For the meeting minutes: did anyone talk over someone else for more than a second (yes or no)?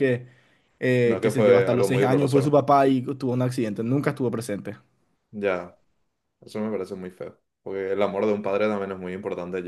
yes